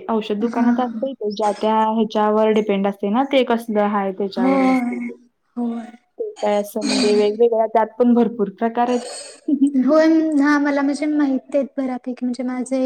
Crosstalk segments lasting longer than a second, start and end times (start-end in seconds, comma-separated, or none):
none